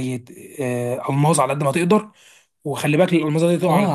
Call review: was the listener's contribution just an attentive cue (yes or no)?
no